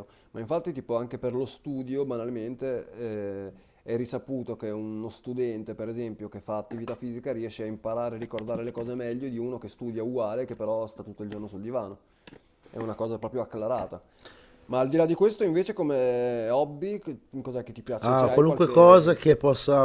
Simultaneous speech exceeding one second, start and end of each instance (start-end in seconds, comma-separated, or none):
18.0-19.2